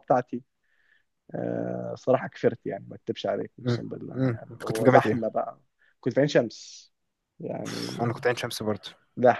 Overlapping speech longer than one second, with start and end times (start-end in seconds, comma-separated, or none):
3.6-5.3